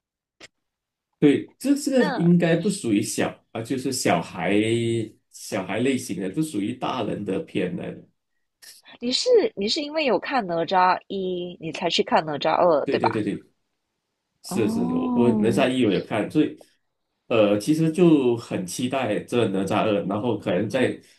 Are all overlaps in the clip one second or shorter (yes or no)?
no